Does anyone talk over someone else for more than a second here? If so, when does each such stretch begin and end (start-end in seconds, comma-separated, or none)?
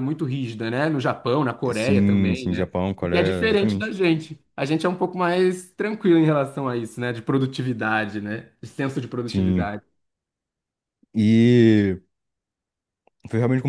1.7-3.9